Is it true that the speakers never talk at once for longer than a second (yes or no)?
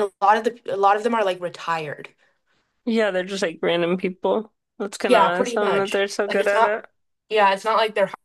no